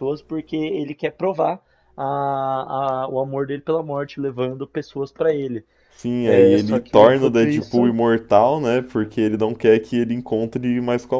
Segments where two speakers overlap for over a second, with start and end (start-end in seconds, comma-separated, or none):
6.2-8.0